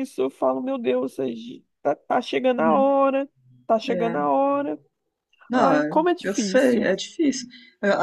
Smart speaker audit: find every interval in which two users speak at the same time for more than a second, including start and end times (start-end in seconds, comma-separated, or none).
5.5-6.9